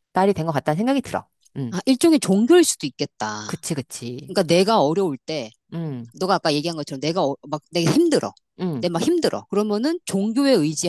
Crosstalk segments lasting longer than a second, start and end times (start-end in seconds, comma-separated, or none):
none